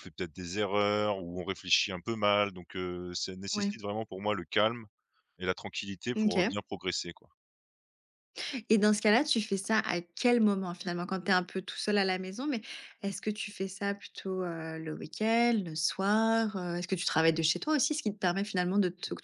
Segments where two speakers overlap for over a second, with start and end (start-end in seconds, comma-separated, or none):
none